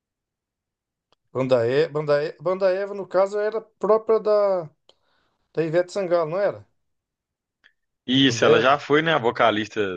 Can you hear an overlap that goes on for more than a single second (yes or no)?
no